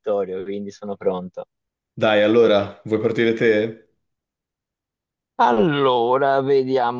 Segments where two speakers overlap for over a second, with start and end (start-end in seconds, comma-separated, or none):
none